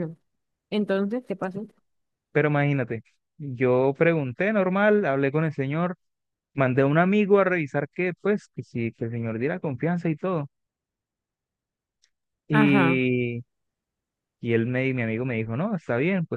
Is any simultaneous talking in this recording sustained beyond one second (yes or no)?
no